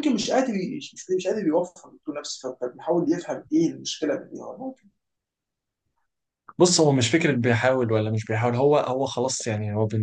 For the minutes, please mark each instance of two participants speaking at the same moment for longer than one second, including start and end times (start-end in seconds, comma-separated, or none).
none